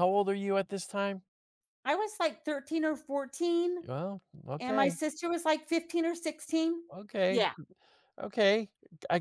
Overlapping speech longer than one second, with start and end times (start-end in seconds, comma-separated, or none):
none